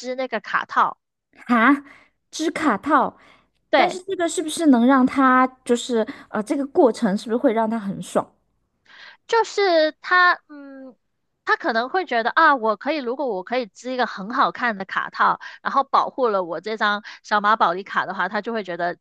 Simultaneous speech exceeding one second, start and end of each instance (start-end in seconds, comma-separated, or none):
none